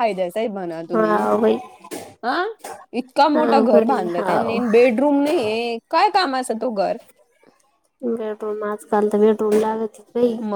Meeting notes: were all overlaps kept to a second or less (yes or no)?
no